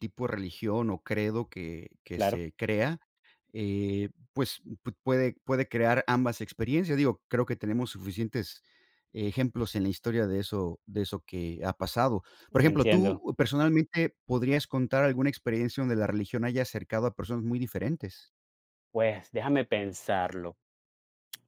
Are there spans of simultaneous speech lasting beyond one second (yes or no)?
no